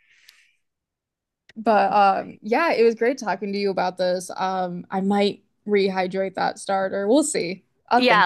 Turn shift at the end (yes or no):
yes